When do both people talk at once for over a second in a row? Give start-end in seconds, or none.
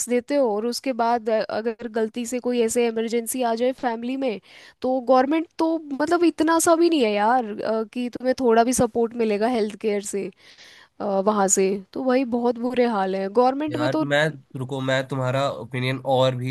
none